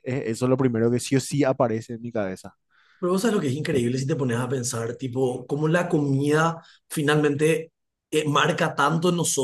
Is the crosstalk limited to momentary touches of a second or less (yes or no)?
yes